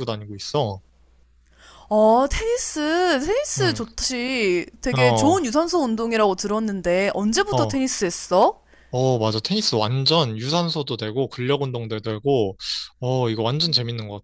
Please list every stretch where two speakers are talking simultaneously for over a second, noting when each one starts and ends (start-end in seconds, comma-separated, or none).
none